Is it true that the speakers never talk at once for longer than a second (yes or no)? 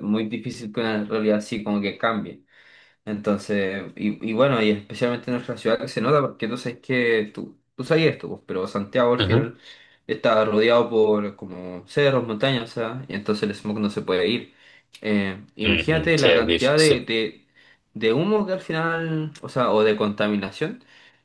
no